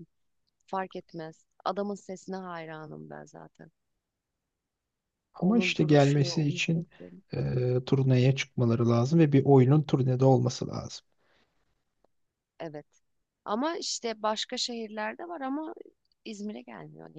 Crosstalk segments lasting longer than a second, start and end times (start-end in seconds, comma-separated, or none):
5.4-6.9